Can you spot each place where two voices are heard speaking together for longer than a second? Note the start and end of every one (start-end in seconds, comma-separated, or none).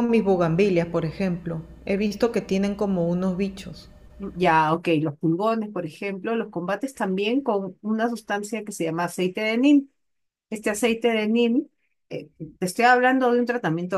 none